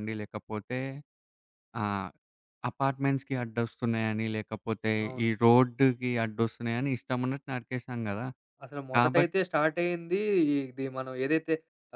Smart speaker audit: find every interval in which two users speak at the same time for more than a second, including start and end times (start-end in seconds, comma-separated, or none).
none